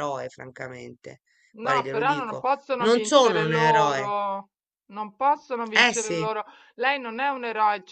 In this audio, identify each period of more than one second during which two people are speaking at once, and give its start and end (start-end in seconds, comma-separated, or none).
1.6-4.1